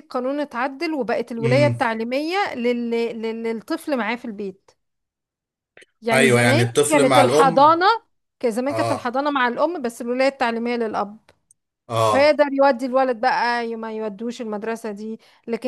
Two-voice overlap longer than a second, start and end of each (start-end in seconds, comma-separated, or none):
6.1-7.8